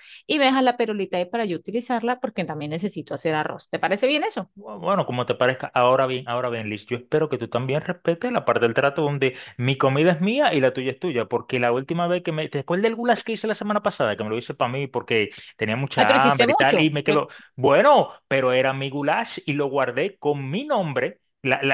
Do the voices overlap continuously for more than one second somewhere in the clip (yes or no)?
yes